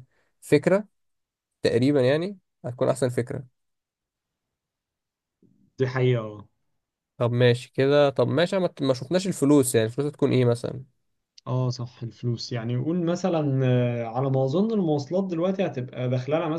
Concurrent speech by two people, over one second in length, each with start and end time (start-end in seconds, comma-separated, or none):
none